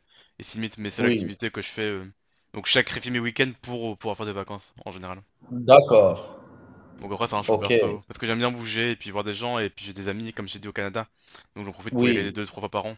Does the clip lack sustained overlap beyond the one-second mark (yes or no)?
yes